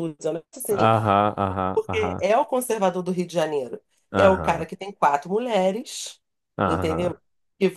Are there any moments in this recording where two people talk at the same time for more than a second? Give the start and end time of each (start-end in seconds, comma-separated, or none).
none